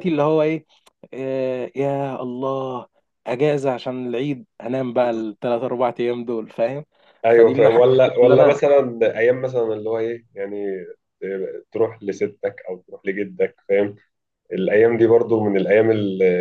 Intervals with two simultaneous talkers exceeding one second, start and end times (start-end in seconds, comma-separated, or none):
7.3-8.6